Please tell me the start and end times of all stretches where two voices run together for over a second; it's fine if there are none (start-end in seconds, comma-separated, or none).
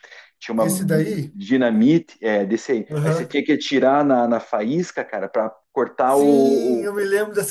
none